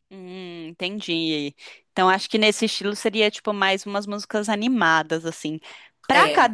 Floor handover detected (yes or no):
no